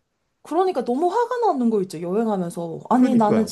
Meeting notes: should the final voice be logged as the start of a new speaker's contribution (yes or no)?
no